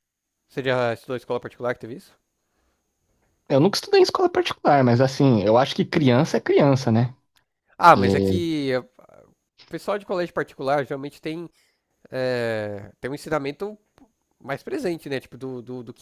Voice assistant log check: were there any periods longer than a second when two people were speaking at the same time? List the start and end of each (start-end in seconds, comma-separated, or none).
none